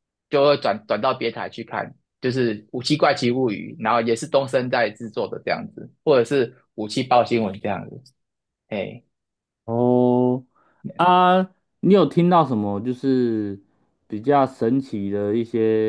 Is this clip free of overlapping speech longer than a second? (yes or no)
yes